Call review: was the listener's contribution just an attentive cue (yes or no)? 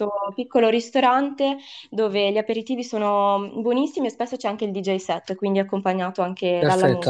no